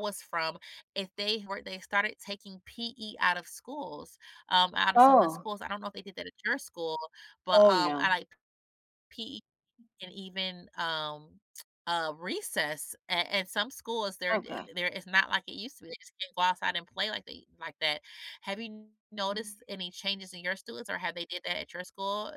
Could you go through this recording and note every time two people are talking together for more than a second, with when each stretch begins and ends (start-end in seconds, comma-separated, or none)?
none